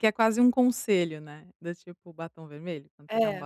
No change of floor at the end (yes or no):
no